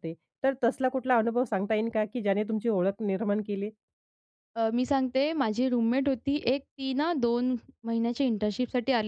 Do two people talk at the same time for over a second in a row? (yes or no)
no